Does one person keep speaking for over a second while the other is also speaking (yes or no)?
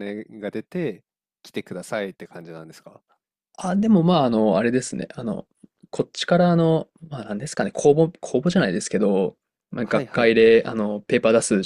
no